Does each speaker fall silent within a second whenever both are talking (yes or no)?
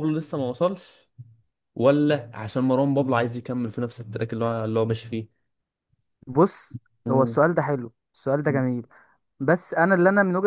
yes